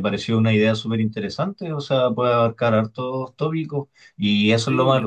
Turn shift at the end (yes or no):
no